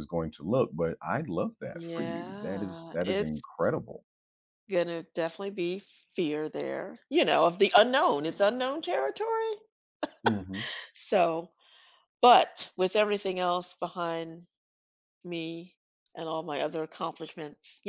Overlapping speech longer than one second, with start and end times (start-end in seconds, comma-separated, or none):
1.7-3.4